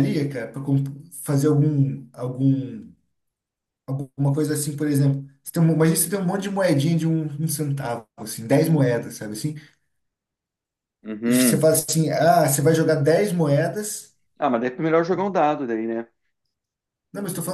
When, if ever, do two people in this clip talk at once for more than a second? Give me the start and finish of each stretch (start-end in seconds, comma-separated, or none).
none